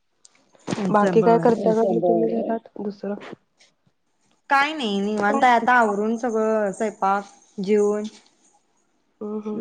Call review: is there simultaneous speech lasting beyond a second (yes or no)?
no